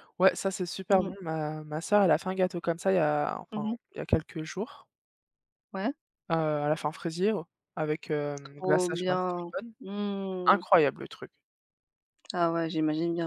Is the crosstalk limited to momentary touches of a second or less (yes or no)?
no